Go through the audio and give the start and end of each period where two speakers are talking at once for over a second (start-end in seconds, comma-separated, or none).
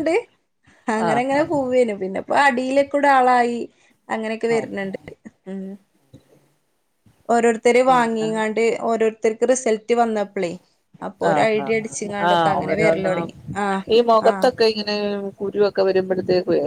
11.3-13.3